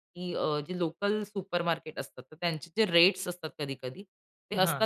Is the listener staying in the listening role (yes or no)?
yes